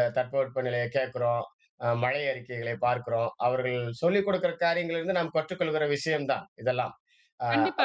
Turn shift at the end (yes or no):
yes